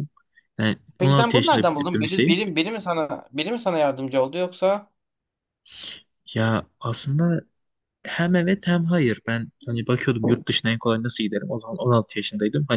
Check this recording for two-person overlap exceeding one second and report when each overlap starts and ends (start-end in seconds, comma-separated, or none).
1.0-2.4